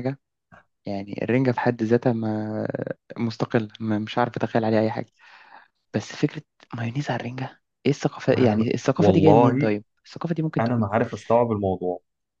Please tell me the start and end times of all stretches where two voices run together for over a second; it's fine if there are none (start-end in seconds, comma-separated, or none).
8.3-9.7